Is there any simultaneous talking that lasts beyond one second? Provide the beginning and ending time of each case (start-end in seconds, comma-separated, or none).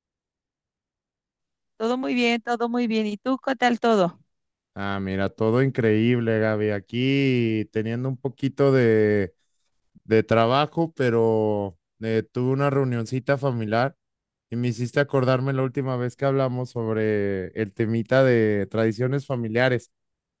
none